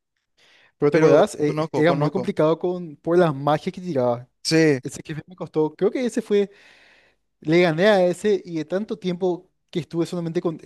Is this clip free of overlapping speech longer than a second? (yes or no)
no